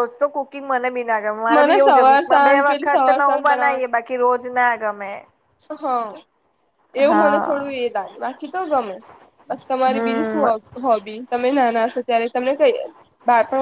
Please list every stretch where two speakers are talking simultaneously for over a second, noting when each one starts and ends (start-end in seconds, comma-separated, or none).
1.5-4.0